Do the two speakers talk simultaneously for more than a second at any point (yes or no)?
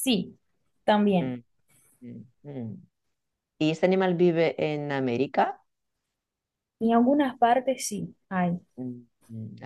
no